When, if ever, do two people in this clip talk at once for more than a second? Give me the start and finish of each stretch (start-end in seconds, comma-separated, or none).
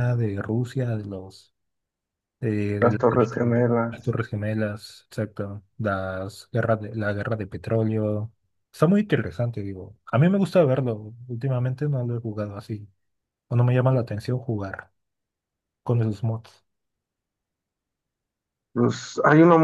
2.8-4.2